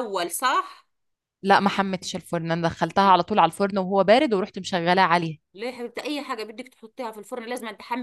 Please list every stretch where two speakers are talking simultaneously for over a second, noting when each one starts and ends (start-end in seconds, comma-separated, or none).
none